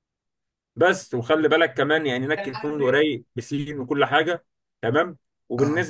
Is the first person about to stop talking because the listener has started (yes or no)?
no